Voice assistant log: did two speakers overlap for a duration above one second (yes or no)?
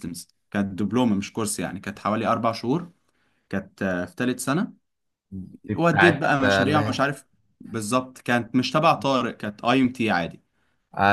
yes